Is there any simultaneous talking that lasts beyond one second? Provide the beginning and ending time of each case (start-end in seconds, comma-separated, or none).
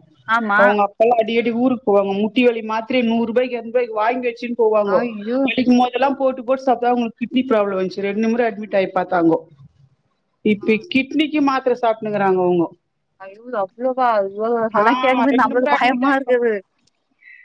14.8-16.4